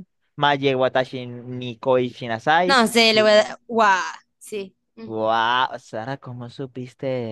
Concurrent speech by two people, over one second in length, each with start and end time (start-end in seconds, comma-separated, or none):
none